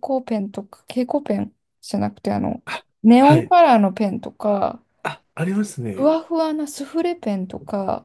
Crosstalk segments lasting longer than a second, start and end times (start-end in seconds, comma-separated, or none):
none